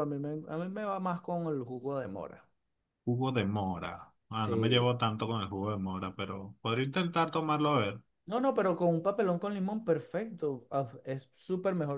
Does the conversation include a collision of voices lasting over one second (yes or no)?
no